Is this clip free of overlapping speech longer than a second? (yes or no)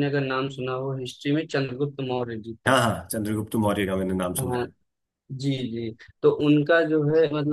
yes